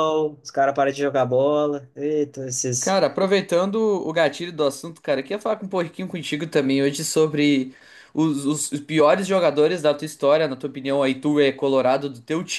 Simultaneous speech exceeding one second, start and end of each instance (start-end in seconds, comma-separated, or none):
none